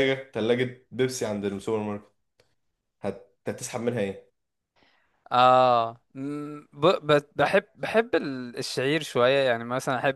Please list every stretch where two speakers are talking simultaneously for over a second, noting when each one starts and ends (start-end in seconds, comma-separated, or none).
none